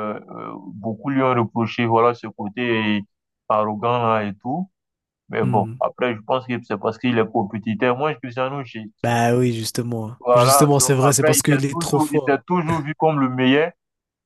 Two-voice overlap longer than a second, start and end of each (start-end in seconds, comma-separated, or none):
10.2-12.4